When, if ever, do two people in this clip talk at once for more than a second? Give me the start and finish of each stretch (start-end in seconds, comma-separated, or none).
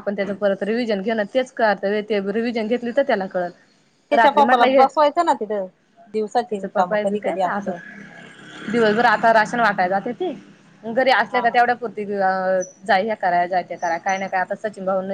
6.3-7.8